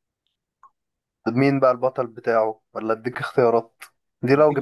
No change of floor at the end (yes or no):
yes